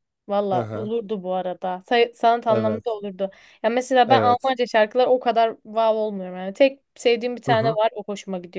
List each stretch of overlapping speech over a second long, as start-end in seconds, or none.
none